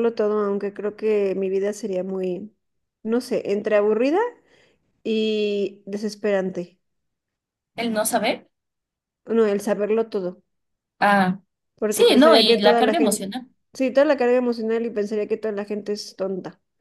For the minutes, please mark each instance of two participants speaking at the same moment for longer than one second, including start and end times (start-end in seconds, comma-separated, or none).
11.9-13.3